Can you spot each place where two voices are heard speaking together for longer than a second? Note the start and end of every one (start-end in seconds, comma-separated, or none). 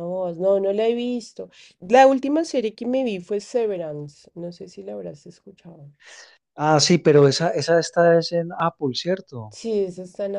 none